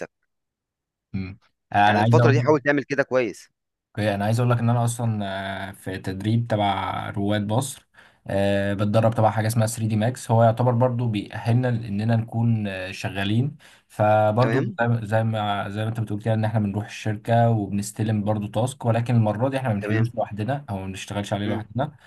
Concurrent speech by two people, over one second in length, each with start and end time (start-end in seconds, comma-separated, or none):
none